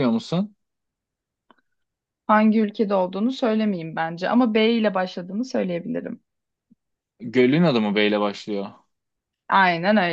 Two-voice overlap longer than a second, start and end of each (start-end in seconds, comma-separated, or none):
none